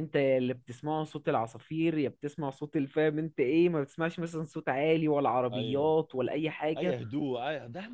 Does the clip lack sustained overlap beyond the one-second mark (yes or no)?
yes